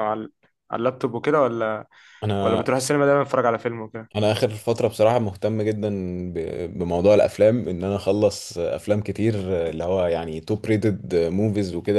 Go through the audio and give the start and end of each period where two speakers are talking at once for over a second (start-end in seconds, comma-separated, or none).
none